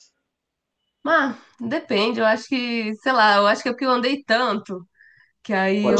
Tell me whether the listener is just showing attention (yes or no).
yes